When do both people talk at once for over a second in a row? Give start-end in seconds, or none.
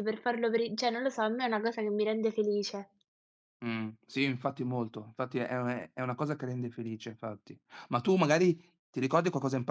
none